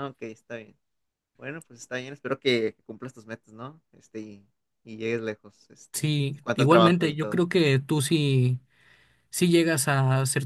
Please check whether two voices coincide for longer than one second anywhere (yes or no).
yes